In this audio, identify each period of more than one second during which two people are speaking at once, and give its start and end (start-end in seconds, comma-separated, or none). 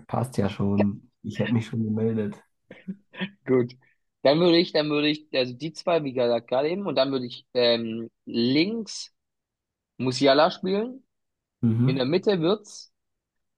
none